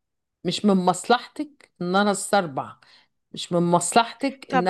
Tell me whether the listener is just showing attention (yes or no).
no